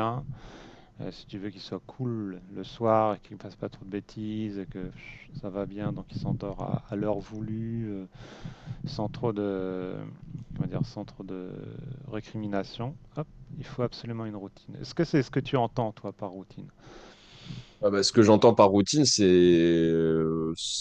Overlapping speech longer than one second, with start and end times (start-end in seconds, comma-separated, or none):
none